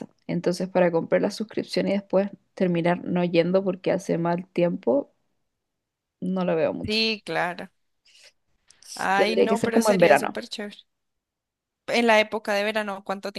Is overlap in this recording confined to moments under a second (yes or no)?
no